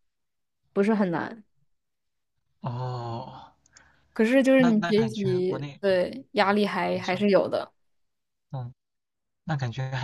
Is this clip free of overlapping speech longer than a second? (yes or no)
no